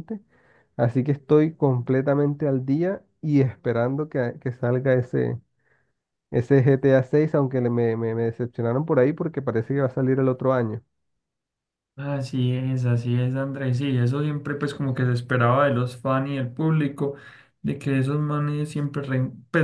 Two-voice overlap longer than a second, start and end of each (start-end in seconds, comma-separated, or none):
none